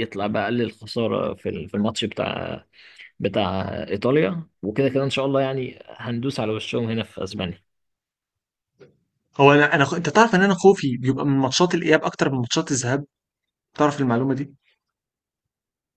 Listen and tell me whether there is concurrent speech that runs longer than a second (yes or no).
no